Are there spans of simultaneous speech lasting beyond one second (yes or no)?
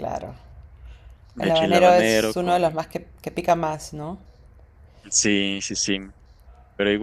yes